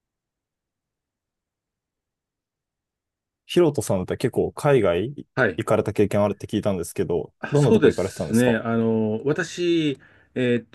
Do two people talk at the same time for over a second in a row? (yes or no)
yes